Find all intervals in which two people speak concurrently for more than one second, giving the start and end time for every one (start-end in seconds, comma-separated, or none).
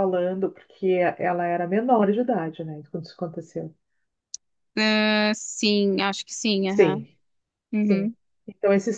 none